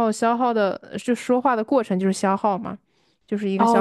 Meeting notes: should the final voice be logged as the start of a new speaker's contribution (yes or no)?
yes